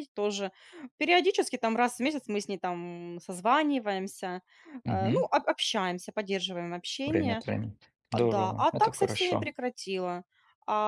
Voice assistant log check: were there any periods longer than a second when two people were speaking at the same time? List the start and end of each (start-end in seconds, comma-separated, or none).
8.1-9.5